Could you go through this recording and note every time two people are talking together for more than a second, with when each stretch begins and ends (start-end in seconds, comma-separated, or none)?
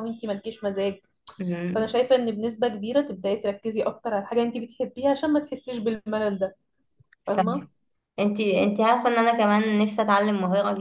none